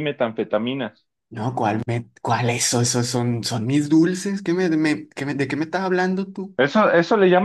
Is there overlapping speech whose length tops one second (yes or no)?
no